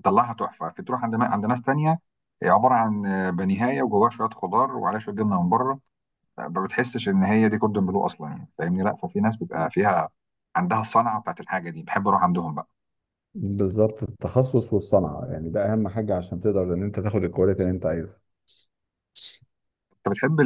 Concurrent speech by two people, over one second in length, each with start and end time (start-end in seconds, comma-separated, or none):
none